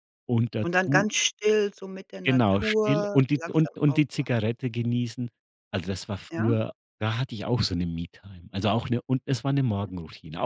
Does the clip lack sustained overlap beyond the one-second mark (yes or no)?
no